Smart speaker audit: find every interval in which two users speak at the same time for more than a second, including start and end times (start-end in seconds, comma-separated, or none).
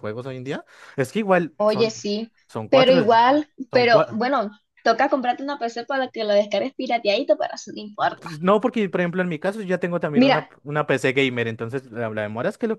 none